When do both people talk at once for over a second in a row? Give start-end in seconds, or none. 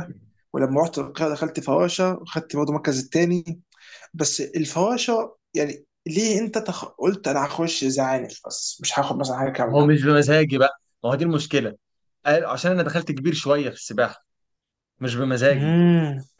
none